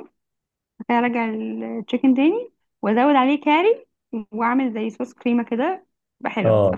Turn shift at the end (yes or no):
yes